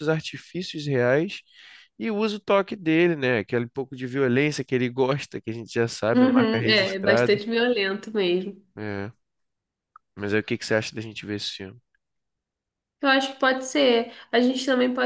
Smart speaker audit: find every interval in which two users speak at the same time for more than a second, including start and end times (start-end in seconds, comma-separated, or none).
6.1-7.4